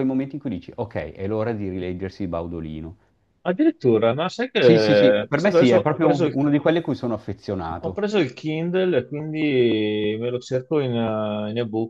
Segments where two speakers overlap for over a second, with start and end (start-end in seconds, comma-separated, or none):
4.6-6.4